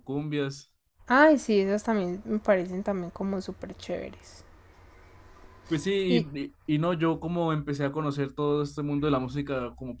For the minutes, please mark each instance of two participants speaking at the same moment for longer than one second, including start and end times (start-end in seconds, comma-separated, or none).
none